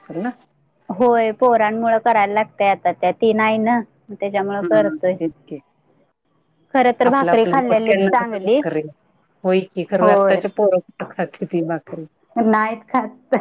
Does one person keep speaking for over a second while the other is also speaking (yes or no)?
yes